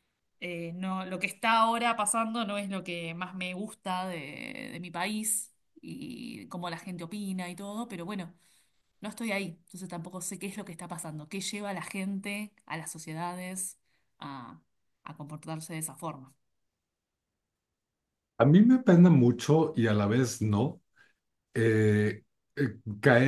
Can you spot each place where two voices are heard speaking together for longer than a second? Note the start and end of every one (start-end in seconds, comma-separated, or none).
none